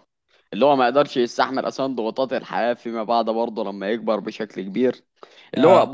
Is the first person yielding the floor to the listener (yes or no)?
no